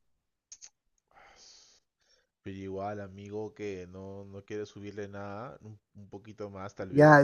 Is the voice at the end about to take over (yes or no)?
yes